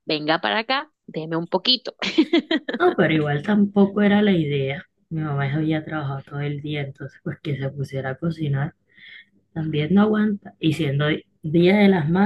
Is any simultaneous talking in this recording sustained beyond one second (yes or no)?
no